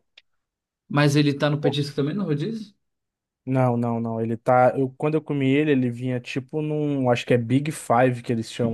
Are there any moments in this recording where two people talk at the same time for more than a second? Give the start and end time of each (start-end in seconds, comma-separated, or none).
none